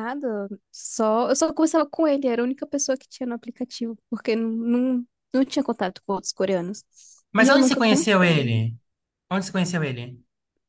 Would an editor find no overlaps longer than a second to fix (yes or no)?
no